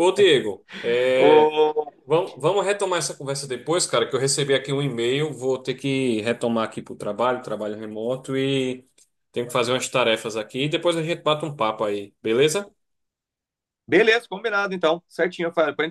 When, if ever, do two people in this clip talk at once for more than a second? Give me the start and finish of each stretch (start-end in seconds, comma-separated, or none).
none